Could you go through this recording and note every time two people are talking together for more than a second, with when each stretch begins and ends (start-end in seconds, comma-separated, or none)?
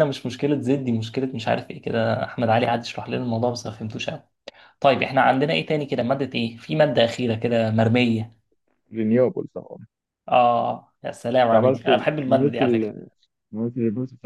11.5-12.9